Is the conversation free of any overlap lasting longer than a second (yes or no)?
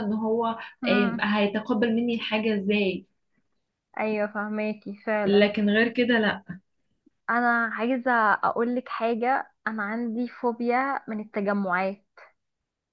yes